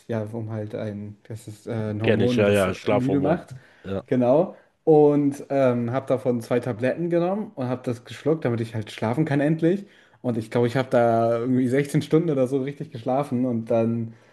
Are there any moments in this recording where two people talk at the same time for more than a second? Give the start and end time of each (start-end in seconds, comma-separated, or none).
2.0-3.4